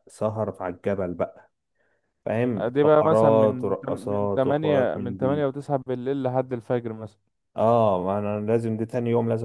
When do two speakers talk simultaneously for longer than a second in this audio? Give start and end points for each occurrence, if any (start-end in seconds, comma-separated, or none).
2.7-5.5